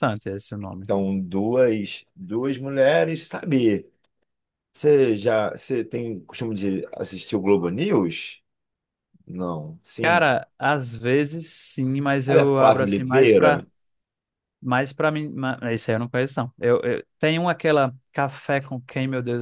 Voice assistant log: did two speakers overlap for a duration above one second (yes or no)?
yes